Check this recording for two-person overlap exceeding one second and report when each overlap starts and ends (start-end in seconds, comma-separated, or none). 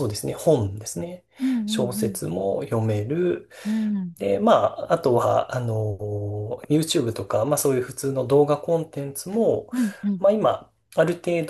none